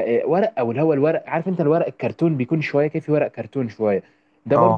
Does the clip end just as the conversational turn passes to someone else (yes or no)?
no